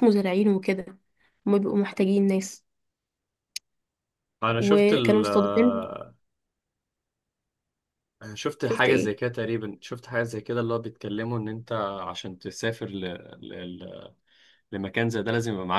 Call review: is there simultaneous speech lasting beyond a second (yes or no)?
yes